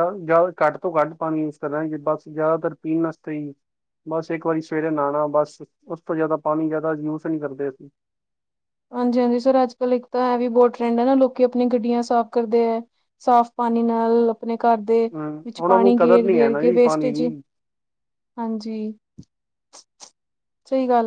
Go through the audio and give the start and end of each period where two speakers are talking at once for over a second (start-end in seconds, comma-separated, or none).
15.5-17.2